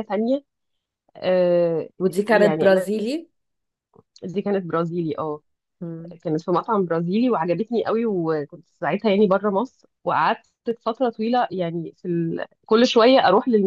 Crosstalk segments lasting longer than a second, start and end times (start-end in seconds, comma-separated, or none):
none